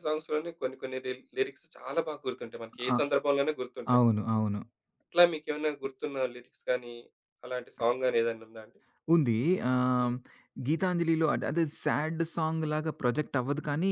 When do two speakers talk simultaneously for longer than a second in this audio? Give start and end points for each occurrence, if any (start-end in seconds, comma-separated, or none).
none